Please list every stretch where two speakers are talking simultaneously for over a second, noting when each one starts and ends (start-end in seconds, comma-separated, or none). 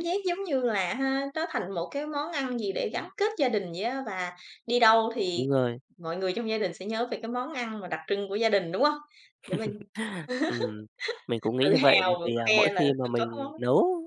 11.6-13.5